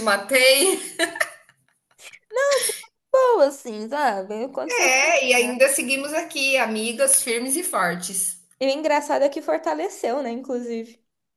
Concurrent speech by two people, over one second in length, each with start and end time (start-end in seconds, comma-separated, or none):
none